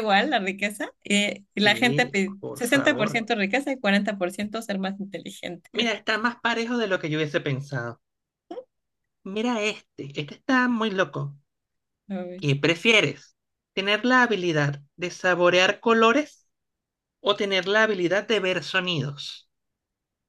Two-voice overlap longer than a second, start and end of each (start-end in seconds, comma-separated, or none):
1.6-3.2